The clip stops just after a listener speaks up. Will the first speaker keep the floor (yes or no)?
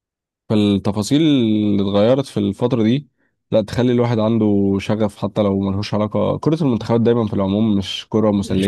no